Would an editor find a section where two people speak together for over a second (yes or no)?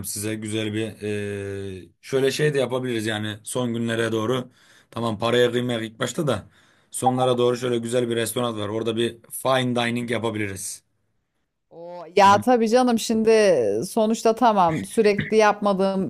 no